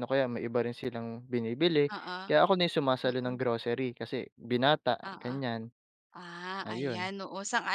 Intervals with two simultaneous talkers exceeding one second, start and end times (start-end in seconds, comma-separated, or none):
none